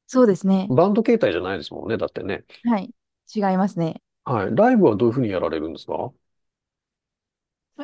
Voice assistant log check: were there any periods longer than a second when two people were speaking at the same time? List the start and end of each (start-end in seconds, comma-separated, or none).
none